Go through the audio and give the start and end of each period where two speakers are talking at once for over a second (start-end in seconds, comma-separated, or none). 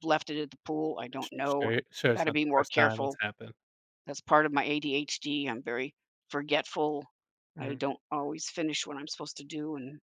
1.2-3.2